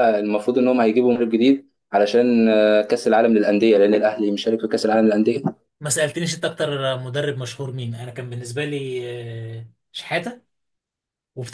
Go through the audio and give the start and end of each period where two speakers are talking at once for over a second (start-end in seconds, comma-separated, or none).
none